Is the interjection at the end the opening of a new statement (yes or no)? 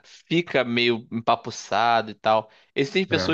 no